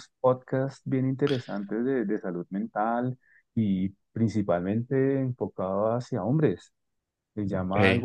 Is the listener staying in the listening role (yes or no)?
yes